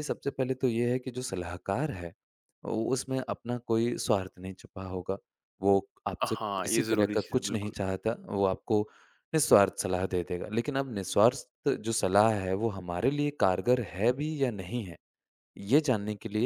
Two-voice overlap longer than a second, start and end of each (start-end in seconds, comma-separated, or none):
6.2-7.8